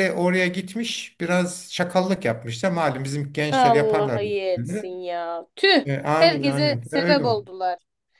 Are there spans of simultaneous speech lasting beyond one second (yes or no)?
yes